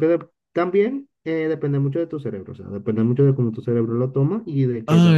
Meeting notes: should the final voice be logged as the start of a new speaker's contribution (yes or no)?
yes